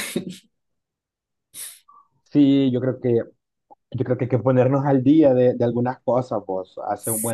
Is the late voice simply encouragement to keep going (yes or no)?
yes